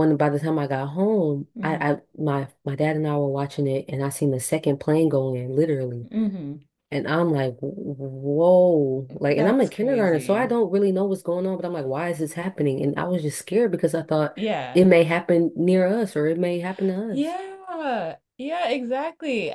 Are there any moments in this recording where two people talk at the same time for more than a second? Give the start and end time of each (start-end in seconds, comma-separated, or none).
9.3-10.6